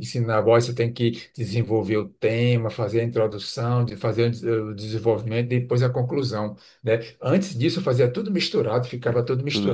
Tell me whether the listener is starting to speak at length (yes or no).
no